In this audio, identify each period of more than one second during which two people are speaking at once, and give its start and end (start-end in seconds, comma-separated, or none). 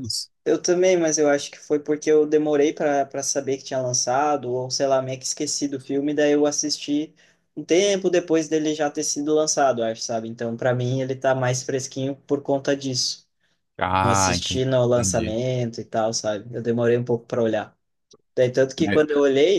14.0-15.4